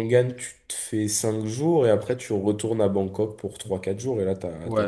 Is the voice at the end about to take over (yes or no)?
yes